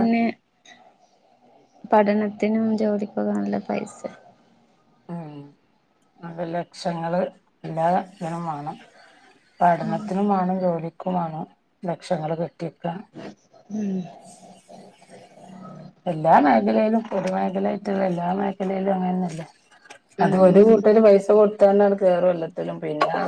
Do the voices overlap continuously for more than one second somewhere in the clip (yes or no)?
no